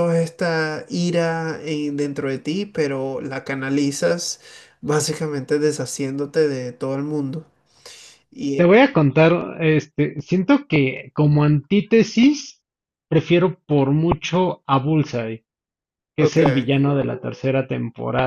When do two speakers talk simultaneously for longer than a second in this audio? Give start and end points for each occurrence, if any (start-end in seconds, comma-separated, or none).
none